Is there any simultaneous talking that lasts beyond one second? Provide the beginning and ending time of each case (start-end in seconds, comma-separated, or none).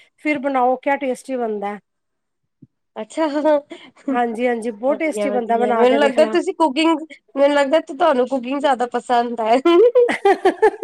4.9-6.4